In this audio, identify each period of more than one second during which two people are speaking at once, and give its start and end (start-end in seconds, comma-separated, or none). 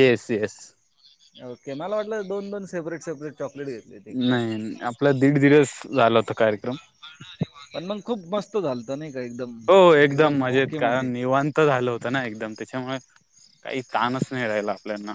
none